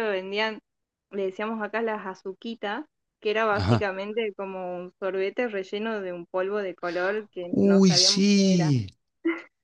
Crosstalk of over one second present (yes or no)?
yes